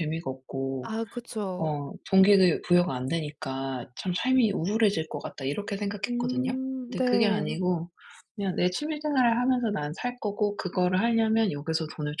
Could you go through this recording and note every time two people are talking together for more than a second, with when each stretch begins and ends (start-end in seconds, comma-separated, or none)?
6.0-7.6